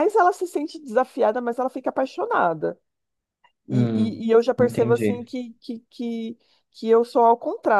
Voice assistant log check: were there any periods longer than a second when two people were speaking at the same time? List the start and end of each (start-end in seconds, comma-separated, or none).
3.7-5.3